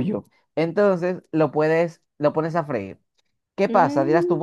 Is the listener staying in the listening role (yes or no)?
yes